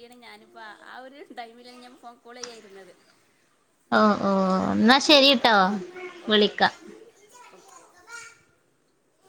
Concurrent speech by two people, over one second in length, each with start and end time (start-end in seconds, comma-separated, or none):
none